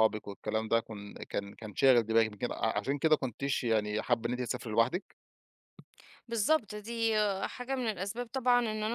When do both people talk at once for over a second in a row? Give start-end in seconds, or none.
none